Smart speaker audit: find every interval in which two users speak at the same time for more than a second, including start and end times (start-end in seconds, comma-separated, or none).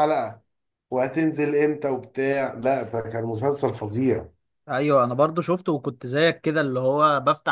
none